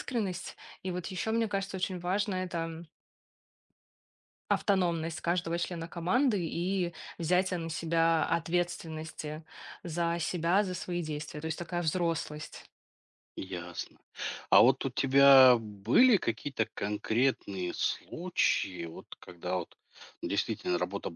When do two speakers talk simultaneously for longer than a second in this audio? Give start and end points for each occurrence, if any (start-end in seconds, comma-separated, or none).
none